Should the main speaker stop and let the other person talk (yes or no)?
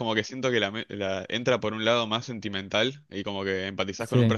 no